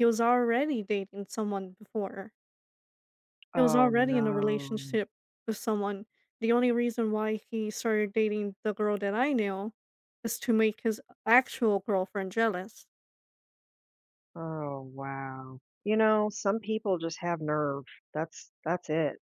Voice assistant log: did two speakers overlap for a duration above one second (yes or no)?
yes